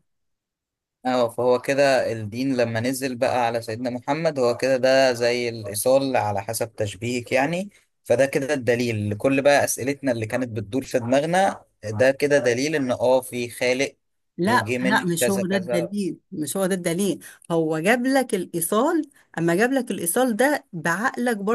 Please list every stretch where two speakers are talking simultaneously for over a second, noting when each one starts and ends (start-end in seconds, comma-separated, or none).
14.4-15.9